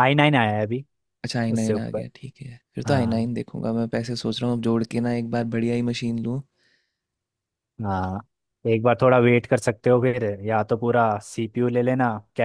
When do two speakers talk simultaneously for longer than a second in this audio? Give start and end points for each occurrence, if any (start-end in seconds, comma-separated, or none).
none